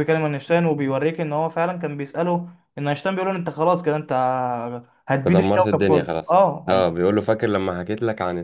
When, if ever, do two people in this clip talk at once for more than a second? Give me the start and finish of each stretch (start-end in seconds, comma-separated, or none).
5.2-6.8